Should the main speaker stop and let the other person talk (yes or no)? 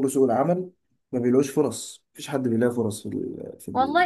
yes